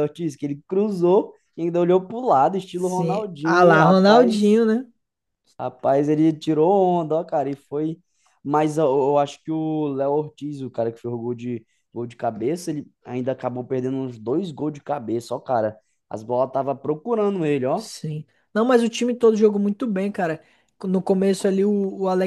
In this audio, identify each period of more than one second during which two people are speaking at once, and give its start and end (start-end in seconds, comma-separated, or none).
2.7-4.6